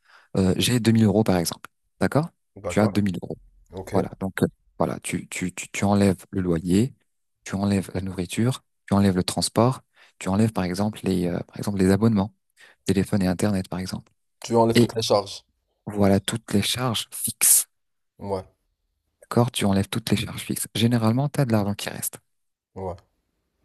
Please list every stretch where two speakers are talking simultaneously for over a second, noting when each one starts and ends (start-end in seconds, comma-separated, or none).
none